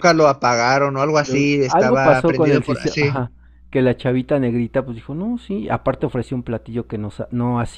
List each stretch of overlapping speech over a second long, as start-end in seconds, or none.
1.1-3.2